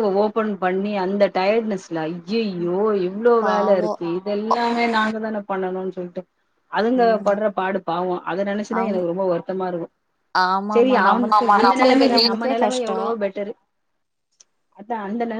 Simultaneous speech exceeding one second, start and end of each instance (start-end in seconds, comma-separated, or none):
10.7-13.0